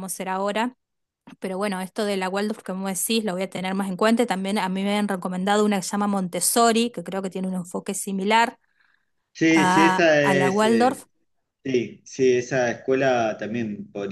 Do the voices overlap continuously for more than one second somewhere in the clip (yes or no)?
yes